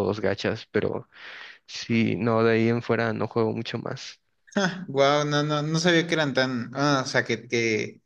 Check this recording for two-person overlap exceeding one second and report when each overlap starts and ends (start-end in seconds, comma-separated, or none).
none